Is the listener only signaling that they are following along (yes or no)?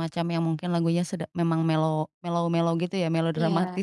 no